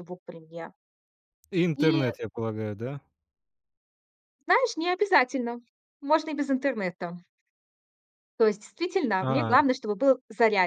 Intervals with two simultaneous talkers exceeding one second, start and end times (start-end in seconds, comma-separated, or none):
none